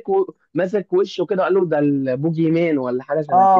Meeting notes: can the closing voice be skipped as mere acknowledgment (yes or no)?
no